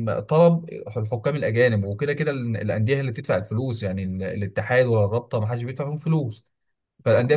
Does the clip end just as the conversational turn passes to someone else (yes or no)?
no